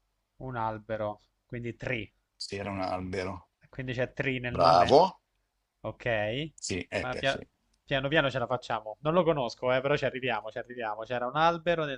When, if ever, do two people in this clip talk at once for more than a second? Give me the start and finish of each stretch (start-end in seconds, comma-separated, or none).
none